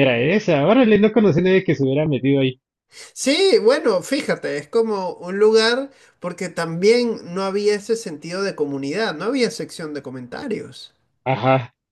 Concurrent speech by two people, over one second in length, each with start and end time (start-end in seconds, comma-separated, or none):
none